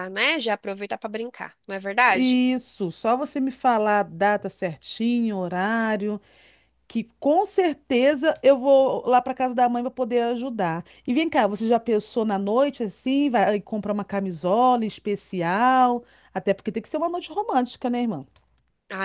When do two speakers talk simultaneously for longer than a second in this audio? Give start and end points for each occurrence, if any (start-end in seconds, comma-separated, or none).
none